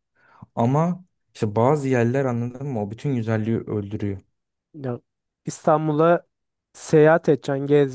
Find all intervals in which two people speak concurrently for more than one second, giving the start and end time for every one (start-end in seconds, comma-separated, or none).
none